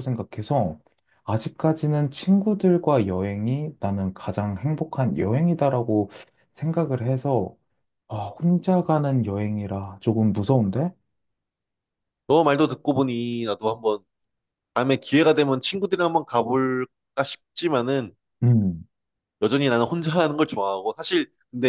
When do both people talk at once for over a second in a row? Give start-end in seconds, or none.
none